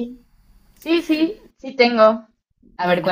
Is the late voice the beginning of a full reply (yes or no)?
yes